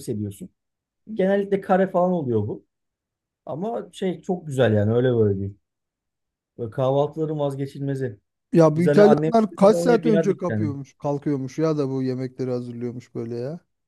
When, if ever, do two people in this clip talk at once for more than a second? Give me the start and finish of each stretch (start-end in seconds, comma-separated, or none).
8.7-10.7